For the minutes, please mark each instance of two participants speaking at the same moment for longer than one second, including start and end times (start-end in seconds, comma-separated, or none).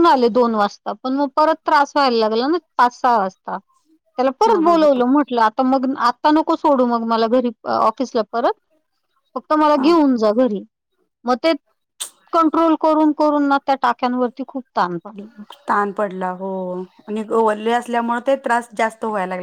none